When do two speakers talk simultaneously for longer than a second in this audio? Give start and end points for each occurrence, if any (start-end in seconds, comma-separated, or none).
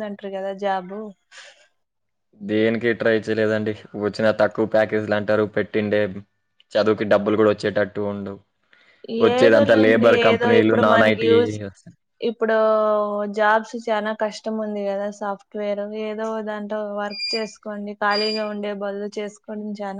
9.4-11.6